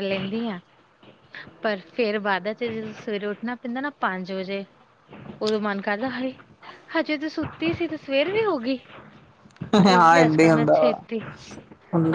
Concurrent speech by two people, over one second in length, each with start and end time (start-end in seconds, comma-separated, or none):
9.9-11.2